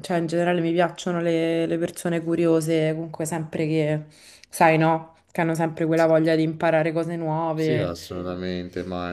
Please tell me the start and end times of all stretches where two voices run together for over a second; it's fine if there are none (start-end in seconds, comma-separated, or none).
none